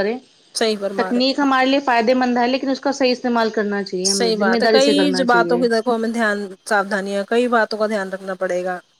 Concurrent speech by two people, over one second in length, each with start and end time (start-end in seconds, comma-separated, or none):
4.1-5.6